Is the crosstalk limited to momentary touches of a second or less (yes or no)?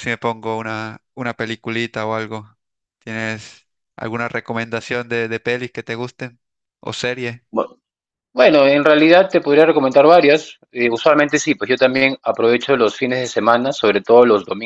yes